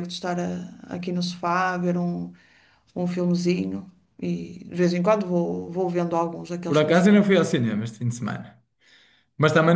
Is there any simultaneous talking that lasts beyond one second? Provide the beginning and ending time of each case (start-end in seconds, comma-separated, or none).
none